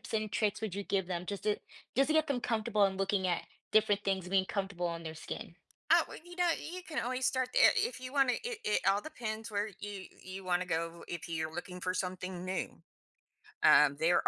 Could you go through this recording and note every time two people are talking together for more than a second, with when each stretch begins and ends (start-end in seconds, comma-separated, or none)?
none